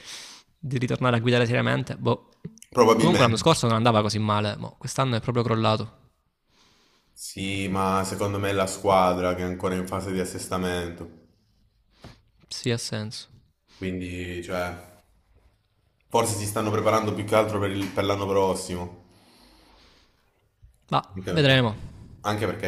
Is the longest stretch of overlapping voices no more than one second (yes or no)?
yes